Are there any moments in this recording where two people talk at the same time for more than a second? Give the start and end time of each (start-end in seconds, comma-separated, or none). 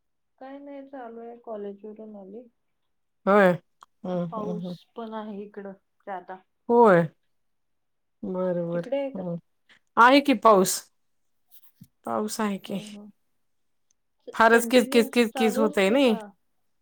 14.5-16.1